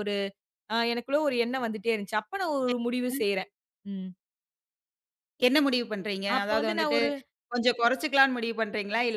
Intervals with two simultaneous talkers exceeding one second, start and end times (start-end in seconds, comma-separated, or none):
none